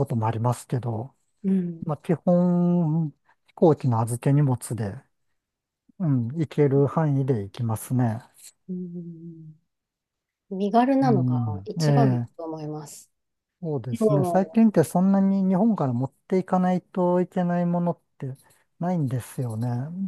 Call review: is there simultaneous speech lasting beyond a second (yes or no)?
yes